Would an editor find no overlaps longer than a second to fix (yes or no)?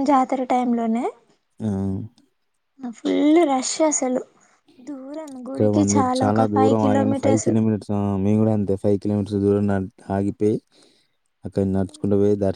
no